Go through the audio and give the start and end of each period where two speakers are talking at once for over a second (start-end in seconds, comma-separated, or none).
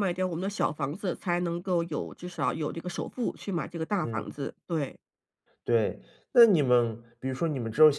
none